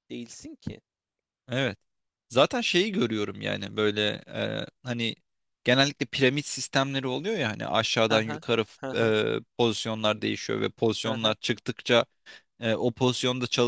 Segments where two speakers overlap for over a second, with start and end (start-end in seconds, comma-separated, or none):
none